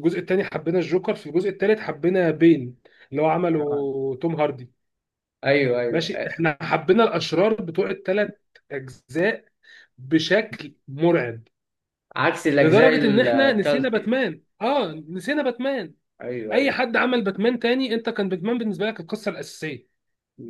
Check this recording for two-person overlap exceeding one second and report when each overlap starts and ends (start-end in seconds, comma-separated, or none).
12.6-14.1